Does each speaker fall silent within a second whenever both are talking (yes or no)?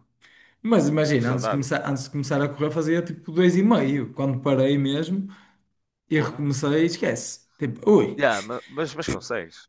yes